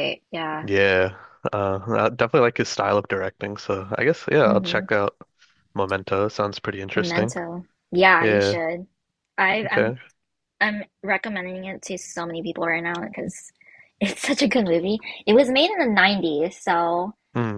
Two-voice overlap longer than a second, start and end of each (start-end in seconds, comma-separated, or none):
none